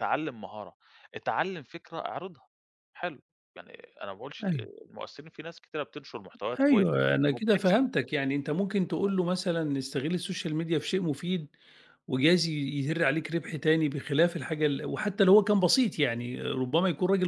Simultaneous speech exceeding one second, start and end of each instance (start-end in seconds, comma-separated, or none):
6.6-7.9